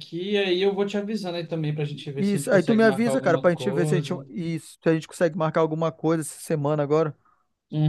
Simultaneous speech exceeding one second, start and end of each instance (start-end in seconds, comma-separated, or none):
2.2-4.2